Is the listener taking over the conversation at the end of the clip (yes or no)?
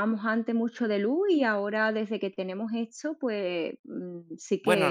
yes